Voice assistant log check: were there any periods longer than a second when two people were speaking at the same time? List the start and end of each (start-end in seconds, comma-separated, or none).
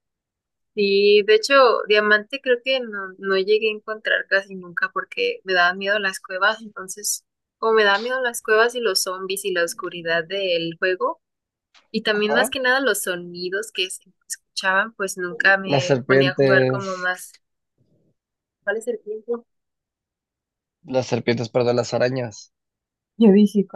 15.7-17.1